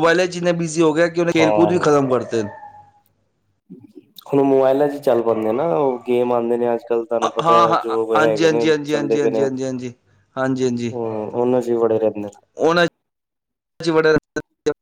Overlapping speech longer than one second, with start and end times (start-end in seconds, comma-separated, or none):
7.2-9.5